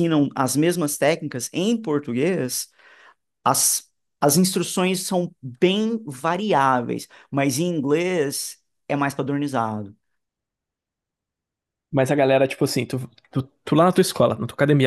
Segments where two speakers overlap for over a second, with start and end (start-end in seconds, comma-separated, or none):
none